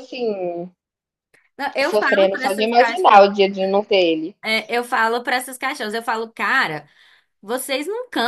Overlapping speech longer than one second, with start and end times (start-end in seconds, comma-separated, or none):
1.8-3.2